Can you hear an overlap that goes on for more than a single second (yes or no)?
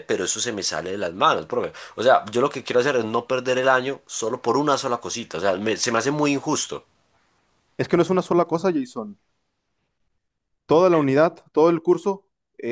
no